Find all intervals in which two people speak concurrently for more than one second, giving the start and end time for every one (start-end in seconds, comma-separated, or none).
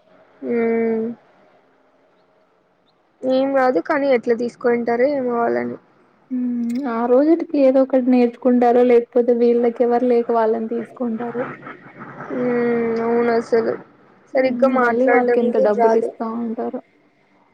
14.4-16.1